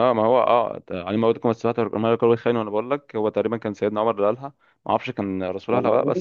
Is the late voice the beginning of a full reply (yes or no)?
no